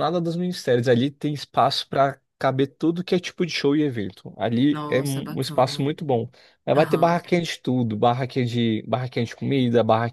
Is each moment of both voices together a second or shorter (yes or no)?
no